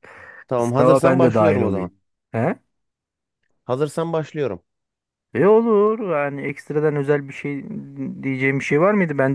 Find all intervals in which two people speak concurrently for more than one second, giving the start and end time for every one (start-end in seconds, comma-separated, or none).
0.6-1.9